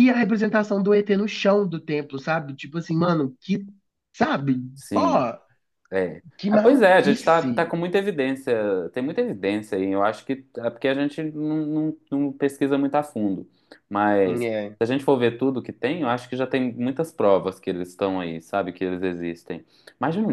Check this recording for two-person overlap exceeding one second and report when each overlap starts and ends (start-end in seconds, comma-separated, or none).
6.4-7.7